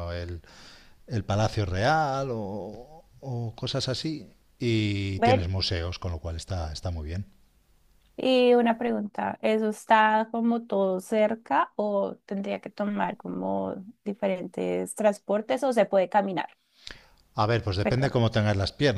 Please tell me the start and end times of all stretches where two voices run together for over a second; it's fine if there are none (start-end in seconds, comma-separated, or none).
none